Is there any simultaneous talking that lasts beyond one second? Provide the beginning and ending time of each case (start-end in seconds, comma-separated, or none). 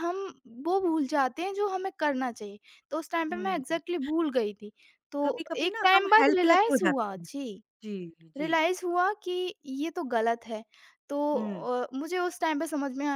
5.2-7.3